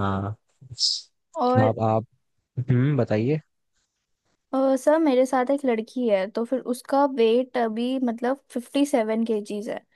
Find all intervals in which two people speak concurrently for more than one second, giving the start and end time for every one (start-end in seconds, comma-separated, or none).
none